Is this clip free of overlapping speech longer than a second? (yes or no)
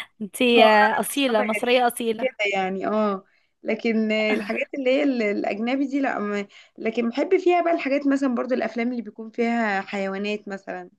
no